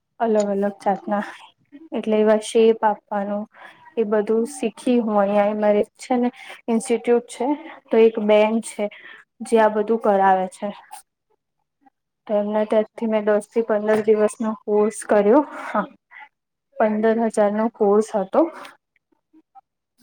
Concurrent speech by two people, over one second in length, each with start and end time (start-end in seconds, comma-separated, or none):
12.7-14.4